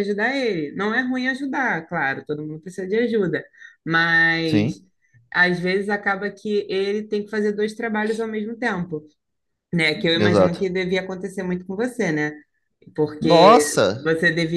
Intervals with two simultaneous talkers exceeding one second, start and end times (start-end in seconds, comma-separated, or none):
none